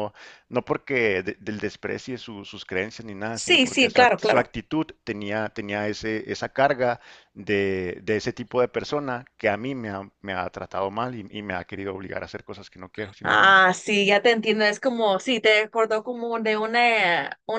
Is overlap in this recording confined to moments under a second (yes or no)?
no